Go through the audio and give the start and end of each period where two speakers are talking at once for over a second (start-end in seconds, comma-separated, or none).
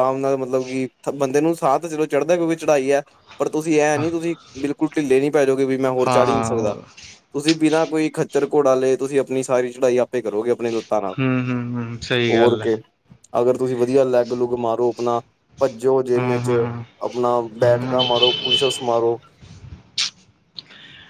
none